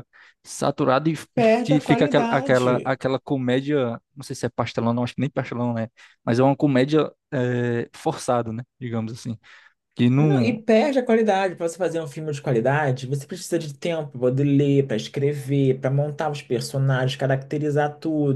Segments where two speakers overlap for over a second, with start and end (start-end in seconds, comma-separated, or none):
1.3-3.0